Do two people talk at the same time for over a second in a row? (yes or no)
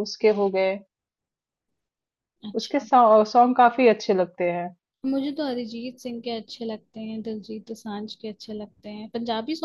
no